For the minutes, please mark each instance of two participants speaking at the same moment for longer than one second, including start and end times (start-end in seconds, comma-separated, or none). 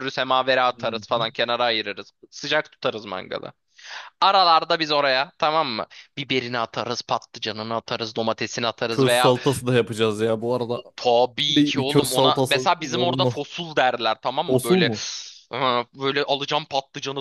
11.5-13.4